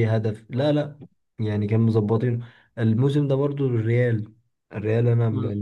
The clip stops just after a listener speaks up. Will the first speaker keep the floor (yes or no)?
no